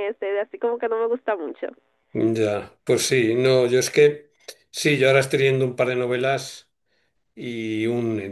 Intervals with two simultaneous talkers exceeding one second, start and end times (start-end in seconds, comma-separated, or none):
none